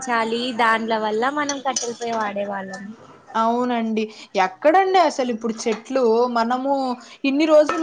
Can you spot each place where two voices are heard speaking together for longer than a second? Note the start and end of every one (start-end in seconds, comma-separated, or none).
none